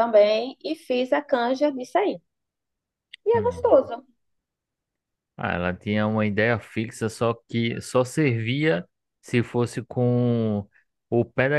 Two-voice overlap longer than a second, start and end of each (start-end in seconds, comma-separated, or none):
none